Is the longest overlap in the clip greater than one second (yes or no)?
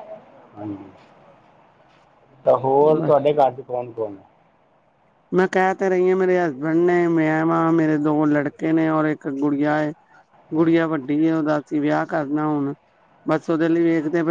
no